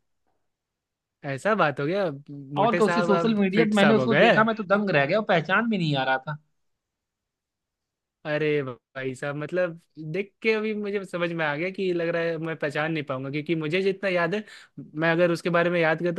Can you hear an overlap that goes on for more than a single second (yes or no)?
yes